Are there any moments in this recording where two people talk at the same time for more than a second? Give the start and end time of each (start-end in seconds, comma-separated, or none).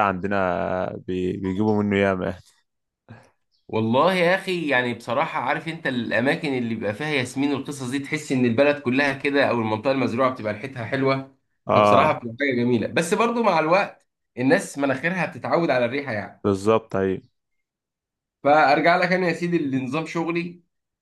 none